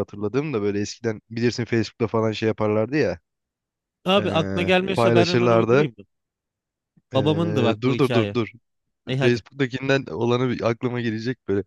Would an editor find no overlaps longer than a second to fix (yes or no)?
no